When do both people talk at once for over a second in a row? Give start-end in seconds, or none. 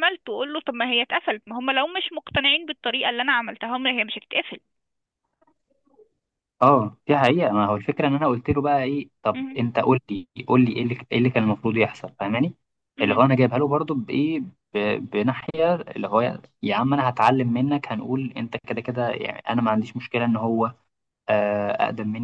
none